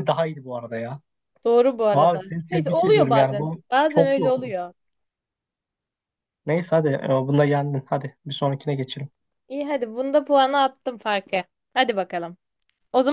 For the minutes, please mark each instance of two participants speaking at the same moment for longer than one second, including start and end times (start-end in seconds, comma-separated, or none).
1.9-4.5